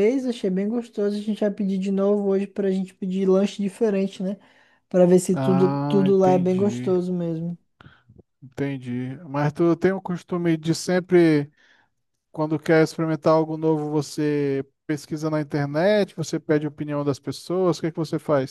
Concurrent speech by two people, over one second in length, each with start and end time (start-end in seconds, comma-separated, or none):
5.3-7.0